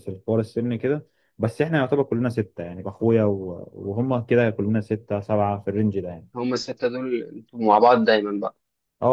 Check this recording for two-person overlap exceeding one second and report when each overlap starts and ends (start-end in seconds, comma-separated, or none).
none